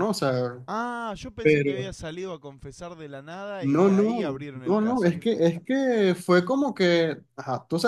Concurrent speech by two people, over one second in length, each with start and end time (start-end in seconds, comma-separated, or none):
3.6-5.2